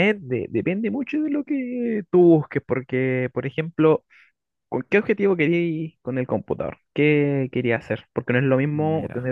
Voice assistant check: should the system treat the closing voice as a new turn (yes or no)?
no